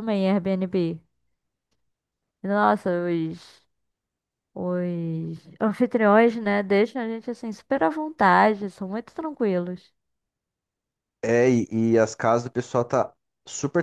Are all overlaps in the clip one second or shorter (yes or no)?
yes